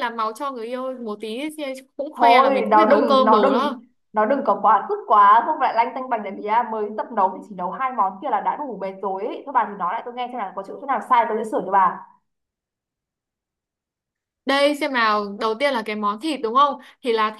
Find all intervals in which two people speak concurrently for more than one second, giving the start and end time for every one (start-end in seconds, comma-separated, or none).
2.1-3.8